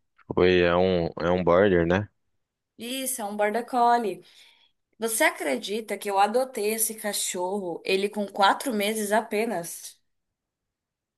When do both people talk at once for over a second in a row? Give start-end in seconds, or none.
none